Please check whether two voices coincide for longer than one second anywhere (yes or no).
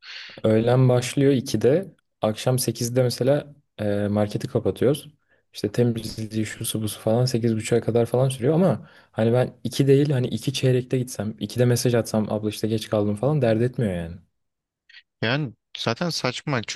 no